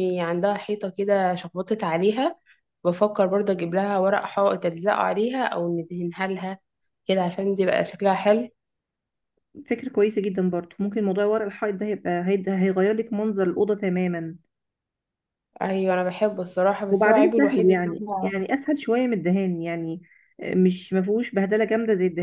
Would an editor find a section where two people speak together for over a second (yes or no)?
yes